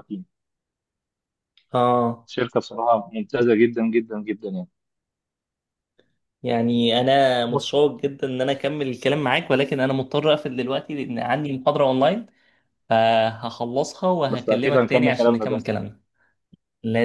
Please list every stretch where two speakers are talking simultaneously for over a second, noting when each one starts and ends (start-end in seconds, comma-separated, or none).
14.3-15.6